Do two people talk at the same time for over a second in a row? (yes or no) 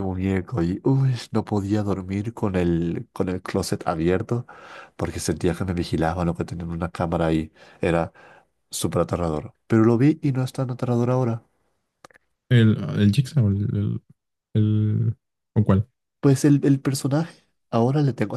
no